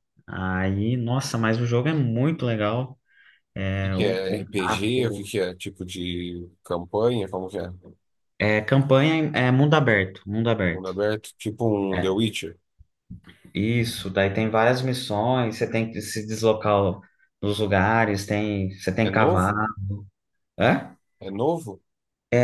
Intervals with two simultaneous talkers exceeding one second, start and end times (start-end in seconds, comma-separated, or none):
3.8-5.3